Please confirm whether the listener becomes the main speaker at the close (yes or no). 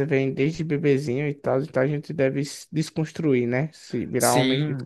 yes